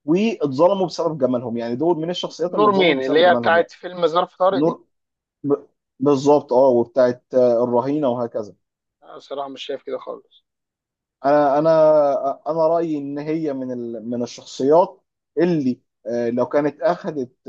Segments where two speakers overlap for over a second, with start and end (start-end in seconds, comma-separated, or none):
2.5-3.7